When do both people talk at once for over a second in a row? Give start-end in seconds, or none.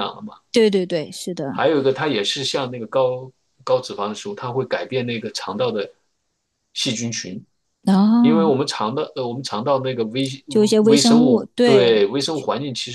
10.8-12.0